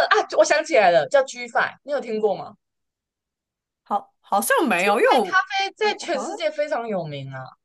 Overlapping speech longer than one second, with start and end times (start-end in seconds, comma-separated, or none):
none